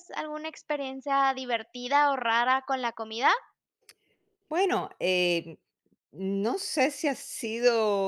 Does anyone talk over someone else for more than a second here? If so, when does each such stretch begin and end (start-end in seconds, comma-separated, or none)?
none